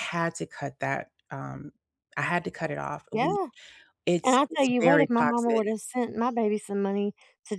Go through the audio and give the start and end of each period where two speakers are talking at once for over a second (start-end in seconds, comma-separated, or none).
4.2-5.6